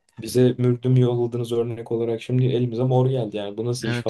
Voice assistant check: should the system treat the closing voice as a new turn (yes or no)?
yes